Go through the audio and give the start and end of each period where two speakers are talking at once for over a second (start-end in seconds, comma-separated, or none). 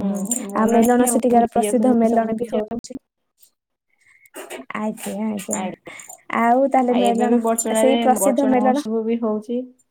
0.6-2.8